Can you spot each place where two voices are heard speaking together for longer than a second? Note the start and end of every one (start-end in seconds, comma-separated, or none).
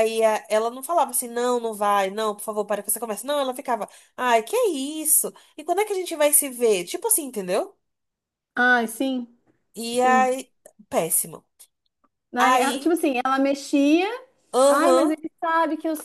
none